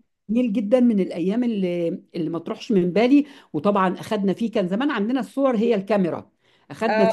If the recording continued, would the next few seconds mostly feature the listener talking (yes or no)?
yes